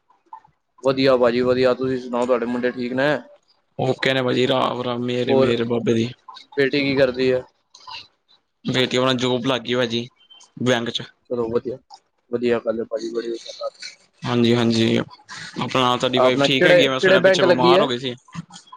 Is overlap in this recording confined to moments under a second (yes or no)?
no